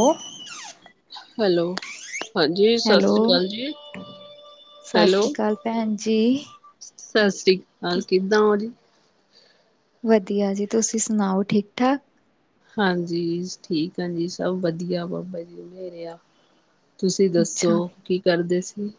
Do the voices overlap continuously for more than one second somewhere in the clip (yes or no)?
no